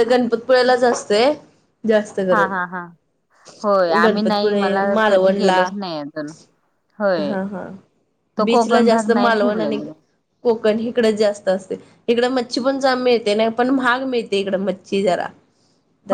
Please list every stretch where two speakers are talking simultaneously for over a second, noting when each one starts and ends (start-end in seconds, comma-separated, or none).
4.0-5.6, 8.4-9.8